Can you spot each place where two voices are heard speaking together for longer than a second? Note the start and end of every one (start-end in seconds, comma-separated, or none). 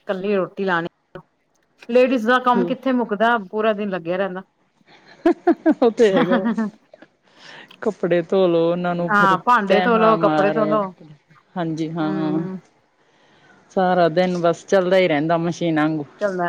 9.1-10.8